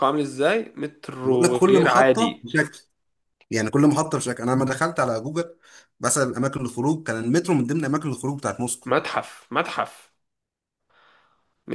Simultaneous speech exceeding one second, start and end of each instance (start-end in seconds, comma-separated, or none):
1.2-2.5